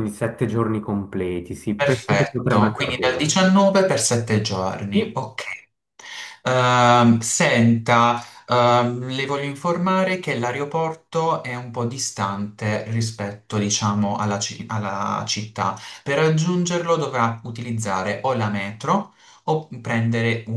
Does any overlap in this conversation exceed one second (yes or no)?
yes